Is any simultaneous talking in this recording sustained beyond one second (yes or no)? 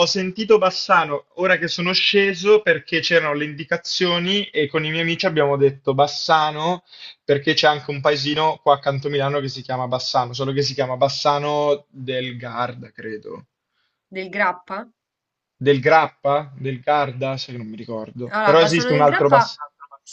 yes